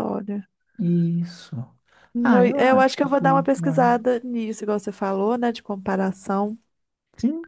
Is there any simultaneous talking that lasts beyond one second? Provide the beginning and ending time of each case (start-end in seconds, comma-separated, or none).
2.2-3.9